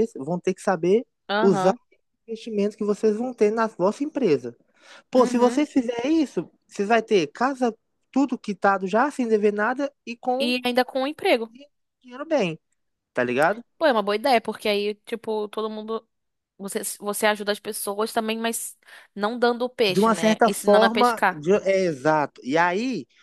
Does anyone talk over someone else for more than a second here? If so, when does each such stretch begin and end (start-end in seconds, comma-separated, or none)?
19.9-21.4